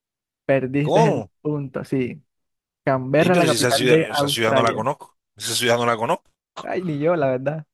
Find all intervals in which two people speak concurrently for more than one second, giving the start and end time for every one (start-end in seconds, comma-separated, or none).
3.2-4.9